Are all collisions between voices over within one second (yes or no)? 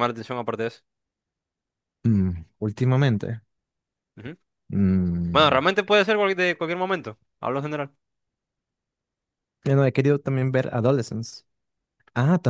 yes